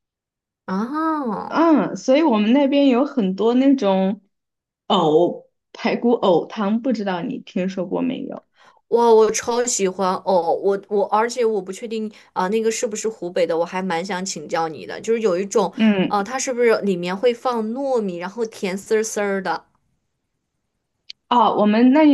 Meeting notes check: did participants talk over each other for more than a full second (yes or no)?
no